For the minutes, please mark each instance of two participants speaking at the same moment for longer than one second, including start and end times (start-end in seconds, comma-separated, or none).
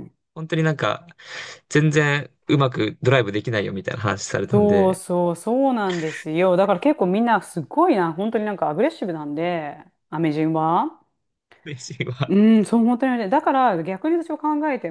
none